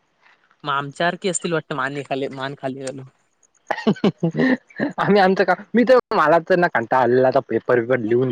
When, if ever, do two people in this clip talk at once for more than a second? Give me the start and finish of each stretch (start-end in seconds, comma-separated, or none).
none